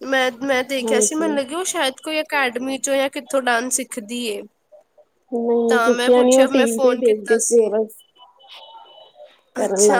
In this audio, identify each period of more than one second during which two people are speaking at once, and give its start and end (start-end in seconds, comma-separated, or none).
5.7-7.7